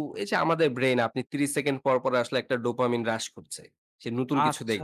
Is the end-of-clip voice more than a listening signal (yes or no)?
no